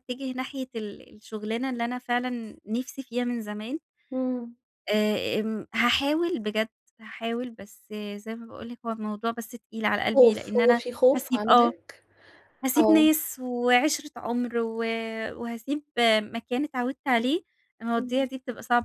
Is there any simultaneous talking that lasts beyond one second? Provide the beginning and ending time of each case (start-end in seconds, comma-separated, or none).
10.0-11.7